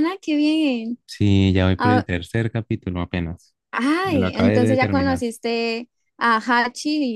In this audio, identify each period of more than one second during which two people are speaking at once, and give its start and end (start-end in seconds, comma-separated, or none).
4.0-5.2